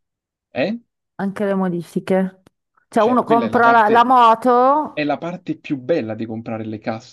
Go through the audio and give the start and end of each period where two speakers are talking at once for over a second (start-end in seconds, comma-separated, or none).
3.0-4.2